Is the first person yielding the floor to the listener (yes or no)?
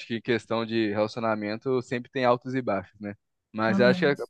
no